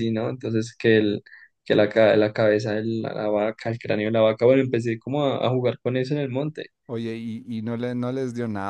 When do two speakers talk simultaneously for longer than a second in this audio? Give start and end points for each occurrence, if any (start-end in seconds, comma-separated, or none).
none